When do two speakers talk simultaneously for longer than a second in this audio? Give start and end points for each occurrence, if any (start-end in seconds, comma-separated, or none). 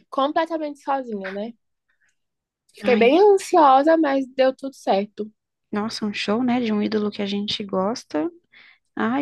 none